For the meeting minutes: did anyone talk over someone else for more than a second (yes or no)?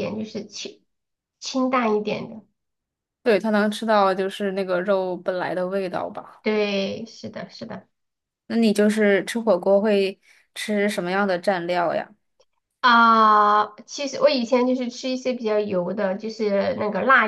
no